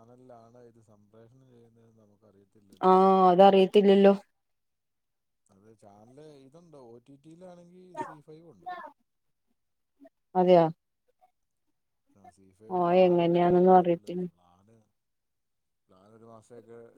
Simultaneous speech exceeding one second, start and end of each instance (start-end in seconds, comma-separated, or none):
12.8-14.2